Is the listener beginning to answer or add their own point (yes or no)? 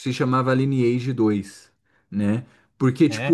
no